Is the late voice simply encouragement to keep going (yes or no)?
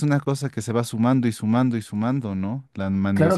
no